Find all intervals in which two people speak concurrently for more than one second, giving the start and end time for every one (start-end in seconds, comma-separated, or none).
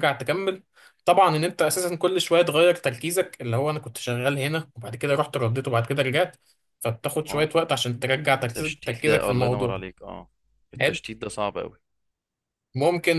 8.6-9.8